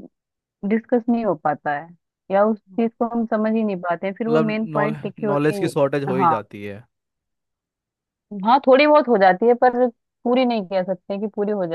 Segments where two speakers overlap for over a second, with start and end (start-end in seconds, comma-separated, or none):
4.3-6.3